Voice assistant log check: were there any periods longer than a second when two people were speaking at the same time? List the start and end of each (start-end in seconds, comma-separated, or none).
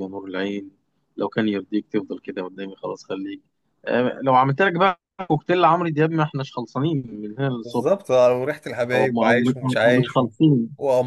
8.9-10.3